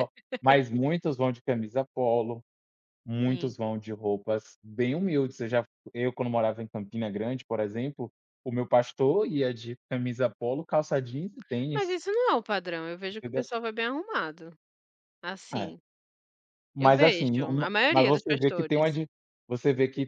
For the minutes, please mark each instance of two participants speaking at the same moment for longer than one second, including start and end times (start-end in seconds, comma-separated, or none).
16.8-18.8